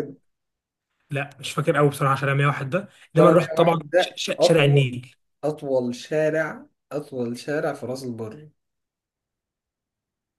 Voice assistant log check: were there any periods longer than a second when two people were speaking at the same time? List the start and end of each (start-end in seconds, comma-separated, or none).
3.2-5.0